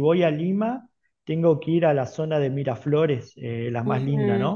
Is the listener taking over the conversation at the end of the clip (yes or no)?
yes